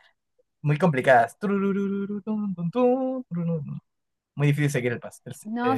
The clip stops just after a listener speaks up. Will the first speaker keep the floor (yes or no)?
no